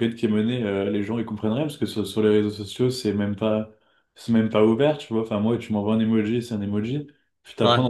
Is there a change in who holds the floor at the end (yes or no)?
no